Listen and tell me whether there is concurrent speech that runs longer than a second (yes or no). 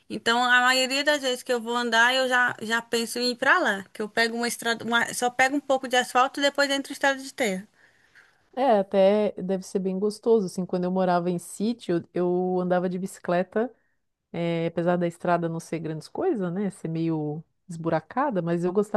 no